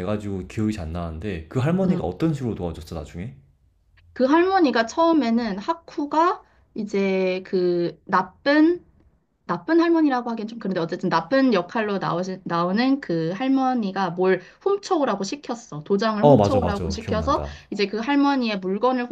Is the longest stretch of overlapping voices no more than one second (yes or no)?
no